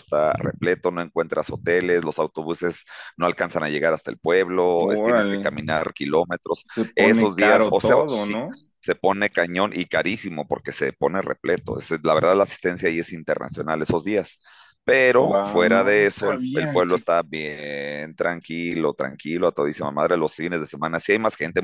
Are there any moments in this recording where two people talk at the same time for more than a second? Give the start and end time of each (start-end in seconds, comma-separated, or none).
6.7-8.4, 15.2-17.0